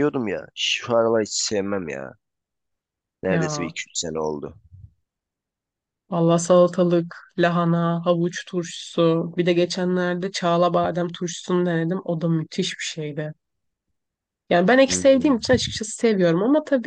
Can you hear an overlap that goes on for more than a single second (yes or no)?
no